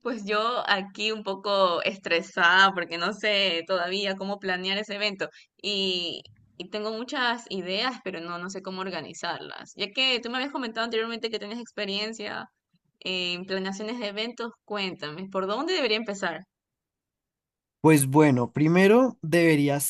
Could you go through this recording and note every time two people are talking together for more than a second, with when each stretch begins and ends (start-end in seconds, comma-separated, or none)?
none